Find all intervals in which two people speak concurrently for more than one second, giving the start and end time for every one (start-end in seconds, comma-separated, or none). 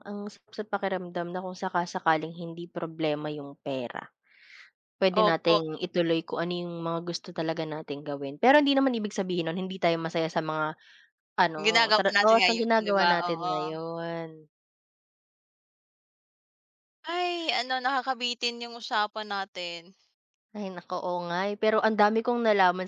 11.7-13.5